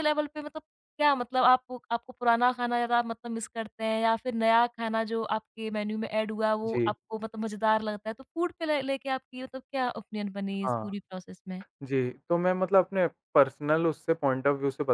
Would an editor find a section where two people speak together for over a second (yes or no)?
no